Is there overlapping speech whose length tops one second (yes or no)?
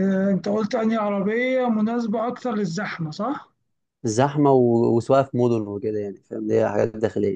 no